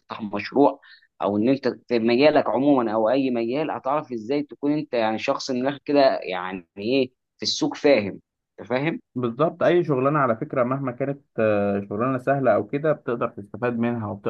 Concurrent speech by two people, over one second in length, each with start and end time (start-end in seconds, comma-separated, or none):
none